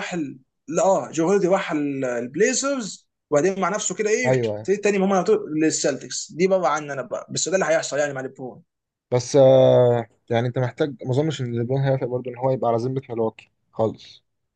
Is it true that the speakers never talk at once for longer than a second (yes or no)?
yes